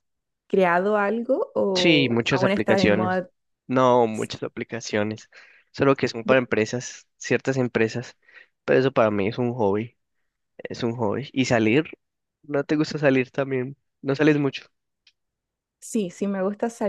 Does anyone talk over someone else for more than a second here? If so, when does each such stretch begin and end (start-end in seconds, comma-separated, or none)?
1.7-3.2